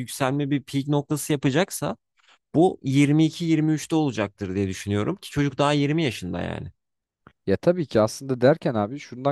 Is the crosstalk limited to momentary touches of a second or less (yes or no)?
yes